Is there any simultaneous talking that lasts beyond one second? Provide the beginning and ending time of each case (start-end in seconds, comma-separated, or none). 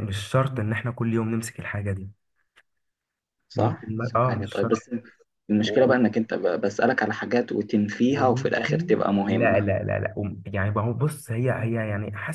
3.5-4.8, 8.1-9.7